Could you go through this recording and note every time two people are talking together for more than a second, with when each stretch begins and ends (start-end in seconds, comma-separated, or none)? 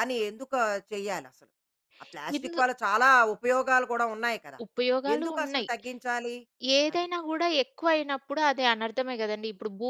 none